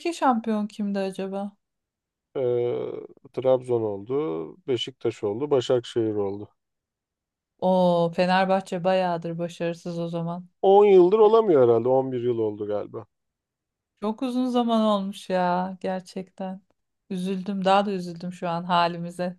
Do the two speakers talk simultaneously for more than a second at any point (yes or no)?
no